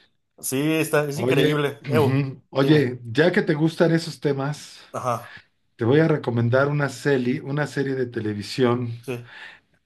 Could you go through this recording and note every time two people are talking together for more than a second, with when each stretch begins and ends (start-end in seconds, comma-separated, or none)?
1.1-2.9